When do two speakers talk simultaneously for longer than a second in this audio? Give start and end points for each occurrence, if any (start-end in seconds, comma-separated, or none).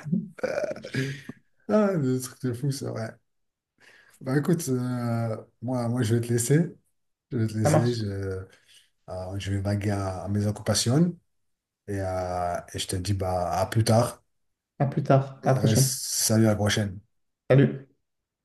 none